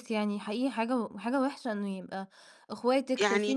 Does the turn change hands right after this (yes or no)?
no